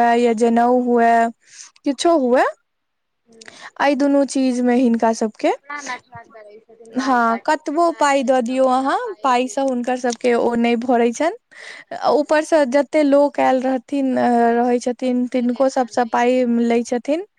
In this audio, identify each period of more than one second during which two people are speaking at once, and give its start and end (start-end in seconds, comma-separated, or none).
7.0-9.9, 15.0-16.6